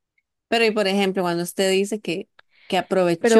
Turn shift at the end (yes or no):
no